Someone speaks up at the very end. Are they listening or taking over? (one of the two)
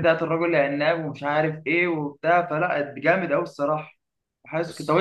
listening